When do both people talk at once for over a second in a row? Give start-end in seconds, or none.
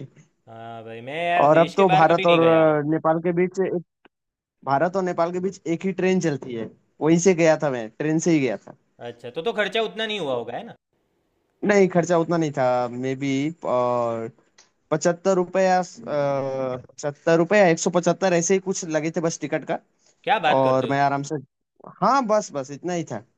1.4-2.8